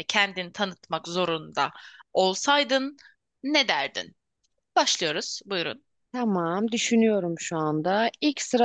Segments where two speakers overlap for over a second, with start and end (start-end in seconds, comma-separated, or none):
none